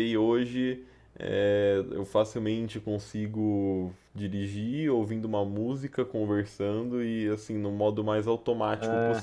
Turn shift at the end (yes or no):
no